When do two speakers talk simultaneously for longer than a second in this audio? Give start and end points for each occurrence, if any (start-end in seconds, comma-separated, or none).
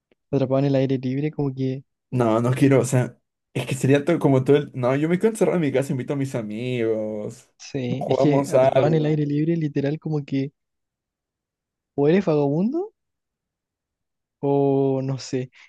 8.0-9.2